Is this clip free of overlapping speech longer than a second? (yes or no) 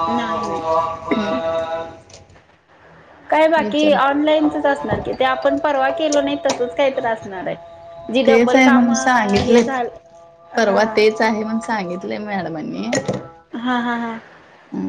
no